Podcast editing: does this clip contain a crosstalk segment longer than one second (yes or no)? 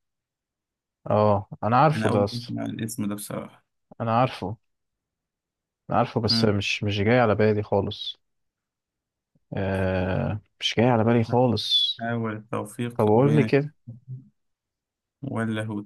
no